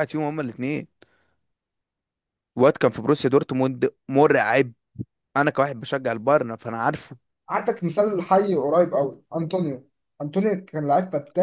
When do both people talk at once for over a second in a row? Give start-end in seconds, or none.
none